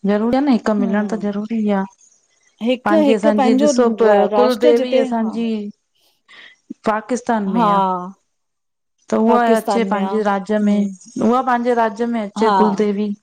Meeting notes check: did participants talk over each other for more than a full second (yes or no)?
yes